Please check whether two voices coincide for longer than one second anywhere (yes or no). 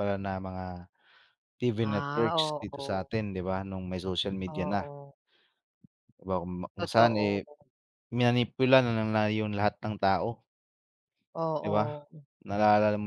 yes